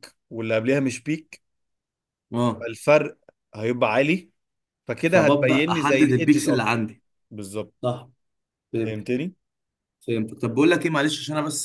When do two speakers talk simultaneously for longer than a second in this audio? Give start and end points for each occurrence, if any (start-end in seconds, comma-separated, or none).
5.0-6.7